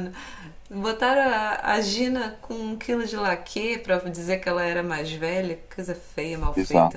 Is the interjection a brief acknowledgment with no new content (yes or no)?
yes